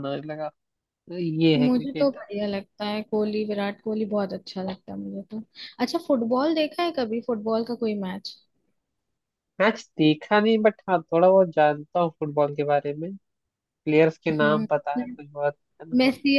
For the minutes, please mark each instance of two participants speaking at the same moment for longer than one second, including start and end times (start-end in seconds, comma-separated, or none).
none